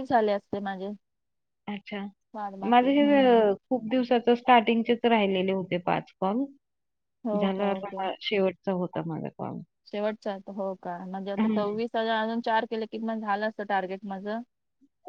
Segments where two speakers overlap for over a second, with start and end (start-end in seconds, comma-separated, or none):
none